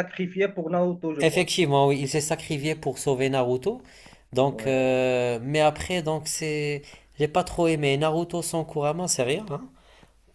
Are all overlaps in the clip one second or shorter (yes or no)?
yes